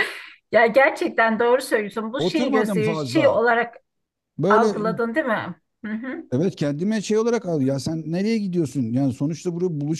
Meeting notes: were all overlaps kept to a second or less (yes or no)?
no